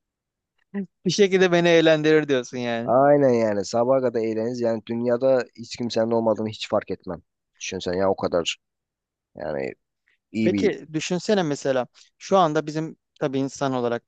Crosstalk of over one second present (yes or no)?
no